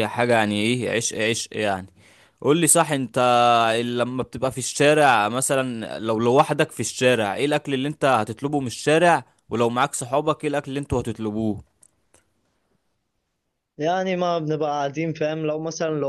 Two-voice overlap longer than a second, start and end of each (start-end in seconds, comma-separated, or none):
none